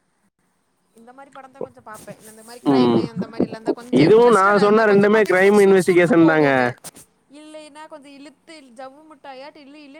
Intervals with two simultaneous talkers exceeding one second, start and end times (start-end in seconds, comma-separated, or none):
4.0-6.5